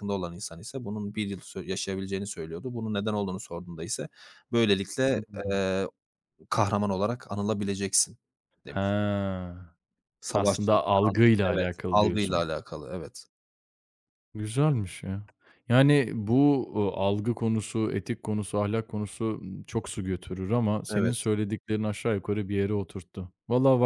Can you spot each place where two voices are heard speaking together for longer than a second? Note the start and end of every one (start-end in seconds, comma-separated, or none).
10.3-12.4